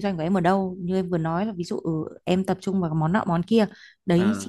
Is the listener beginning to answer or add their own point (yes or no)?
no